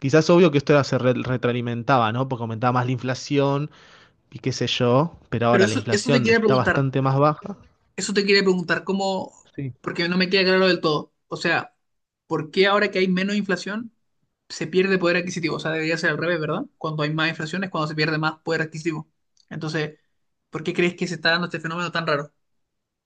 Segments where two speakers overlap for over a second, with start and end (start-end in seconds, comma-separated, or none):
5.5-6.8